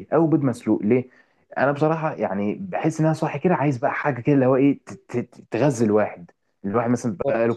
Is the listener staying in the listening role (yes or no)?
yes